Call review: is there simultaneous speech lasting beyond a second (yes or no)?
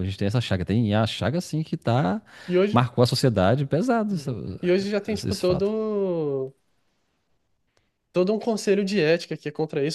no